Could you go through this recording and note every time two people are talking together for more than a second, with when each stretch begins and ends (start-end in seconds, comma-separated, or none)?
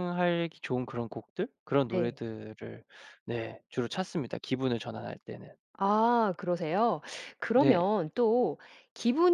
none